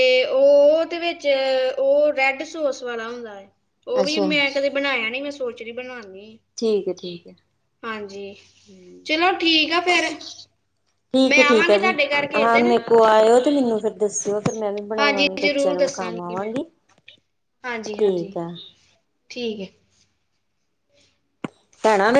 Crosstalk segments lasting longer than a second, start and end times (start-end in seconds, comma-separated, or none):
15.0-16.5